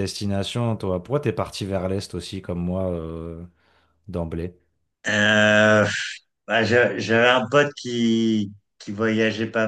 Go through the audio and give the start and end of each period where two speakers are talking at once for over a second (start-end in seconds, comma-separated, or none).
none